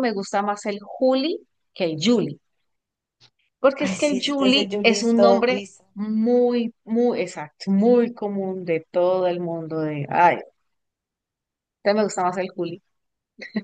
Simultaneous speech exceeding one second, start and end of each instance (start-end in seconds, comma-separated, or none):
3.8-5.8